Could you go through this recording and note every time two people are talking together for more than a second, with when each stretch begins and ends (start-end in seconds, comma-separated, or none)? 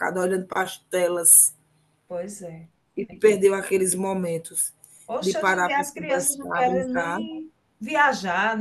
5.2-7.2